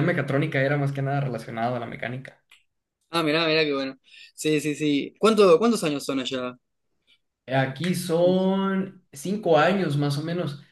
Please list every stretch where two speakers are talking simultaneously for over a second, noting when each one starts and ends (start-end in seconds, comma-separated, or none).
none